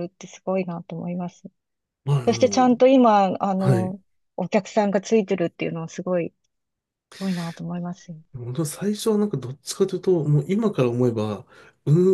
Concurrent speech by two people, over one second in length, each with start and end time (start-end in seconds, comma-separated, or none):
none